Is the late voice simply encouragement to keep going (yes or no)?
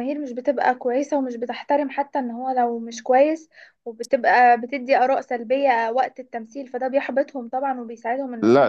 no